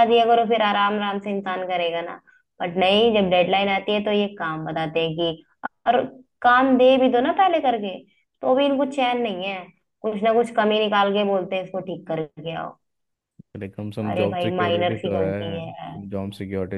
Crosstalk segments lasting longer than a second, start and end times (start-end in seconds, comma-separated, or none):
14.1-16.0